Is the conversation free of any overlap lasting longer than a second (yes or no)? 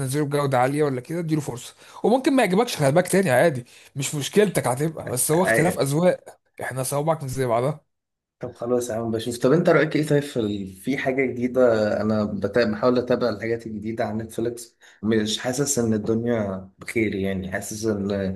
yes